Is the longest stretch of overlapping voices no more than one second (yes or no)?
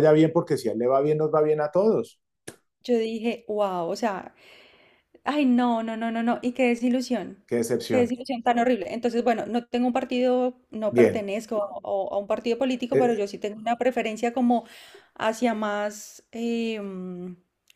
yes